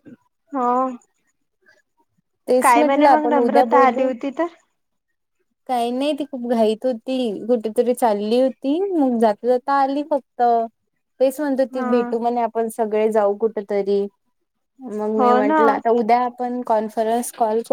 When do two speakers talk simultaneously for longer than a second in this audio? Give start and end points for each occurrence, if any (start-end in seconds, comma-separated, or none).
2.6-4.1